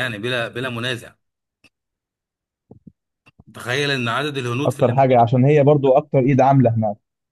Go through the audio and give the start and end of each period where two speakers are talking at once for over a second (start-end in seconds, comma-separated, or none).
none